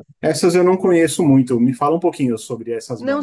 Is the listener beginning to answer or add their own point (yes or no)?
yes